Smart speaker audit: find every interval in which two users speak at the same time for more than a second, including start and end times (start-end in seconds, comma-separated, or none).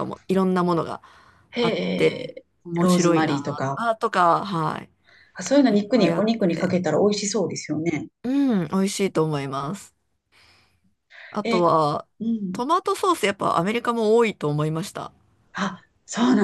1.6-3.8